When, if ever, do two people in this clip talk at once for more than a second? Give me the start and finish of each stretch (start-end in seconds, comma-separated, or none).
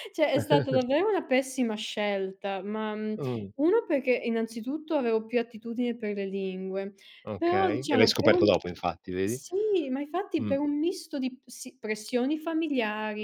7.4-8.6